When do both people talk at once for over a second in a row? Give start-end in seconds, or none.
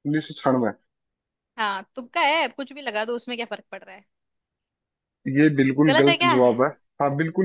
none